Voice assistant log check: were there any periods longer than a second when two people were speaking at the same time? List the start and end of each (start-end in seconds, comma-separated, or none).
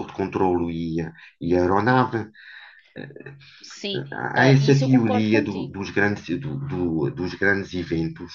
4.3-5.9